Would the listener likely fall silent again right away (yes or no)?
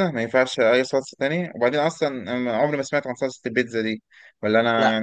no